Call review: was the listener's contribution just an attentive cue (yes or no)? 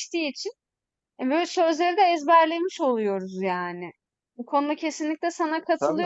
yes